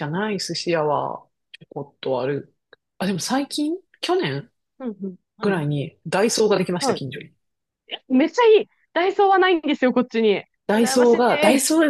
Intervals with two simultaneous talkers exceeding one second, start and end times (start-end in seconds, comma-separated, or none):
none